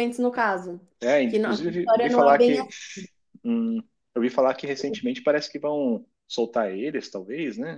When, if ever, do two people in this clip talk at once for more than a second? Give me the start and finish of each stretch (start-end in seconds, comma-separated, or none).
1.3-2.6